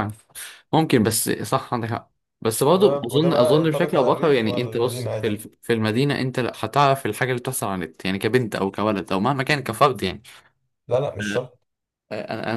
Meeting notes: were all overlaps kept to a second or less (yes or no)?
no